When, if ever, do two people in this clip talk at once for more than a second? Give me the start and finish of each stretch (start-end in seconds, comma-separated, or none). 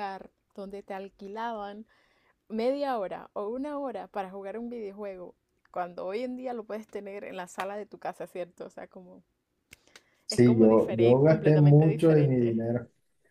10.3-12.6